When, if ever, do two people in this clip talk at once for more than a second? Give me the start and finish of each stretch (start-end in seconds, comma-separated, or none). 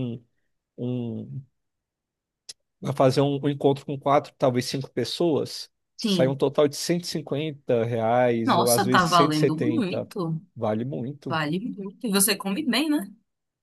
8.4-10.1